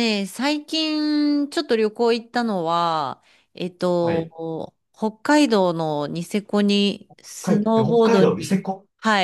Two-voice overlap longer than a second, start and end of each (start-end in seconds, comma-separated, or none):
7.4-8.6